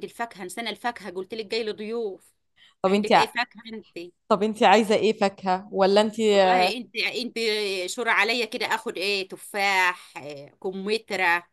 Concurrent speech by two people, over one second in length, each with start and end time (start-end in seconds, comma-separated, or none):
none